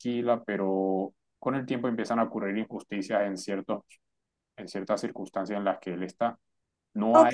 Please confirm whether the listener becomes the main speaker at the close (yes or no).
yes